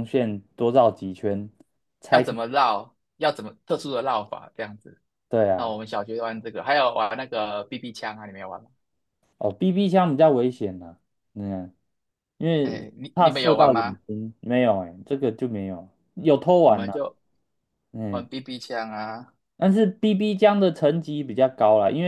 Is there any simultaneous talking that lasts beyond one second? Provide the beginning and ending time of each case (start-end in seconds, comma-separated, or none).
12.6-14.0